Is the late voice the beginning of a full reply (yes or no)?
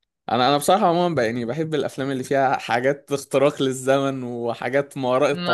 no